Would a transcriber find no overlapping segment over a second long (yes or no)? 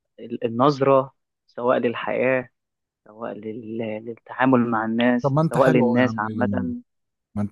no